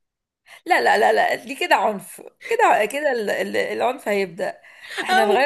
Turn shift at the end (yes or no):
yes